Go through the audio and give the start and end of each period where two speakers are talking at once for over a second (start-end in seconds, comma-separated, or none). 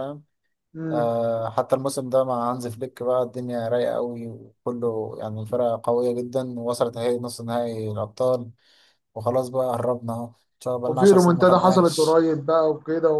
10.9-12.2